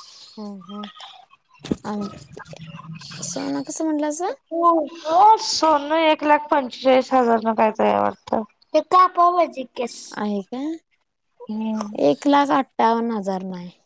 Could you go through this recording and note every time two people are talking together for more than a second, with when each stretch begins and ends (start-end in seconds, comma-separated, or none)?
none